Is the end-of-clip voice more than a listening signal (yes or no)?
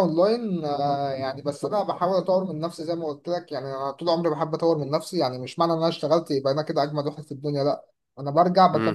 no